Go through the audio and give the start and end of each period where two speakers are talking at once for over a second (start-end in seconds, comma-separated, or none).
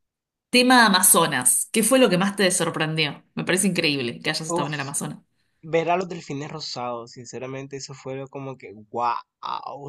none